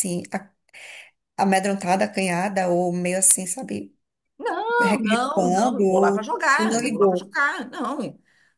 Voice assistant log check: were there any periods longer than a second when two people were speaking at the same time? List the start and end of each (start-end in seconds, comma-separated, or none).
4.8-7.3